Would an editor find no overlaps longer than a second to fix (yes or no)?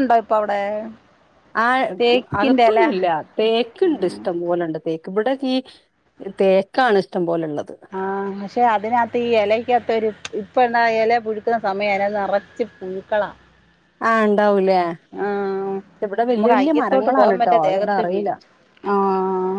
no